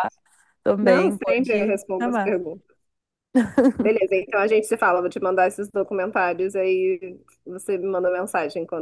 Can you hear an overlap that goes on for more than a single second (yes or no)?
yes